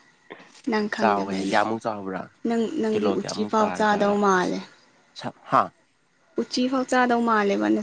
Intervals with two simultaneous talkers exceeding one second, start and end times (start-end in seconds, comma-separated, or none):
2.9-4.6